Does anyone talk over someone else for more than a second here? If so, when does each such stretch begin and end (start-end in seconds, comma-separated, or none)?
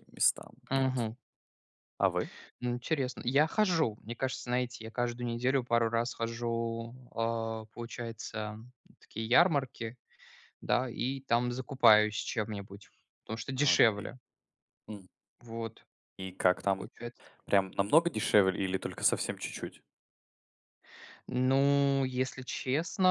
none